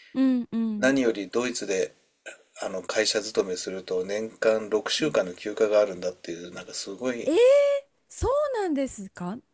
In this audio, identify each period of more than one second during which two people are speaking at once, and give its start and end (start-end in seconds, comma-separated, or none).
none